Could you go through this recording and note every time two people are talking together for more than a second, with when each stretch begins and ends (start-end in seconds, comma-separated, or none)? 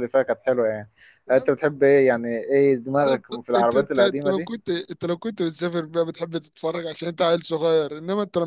2.9-4.5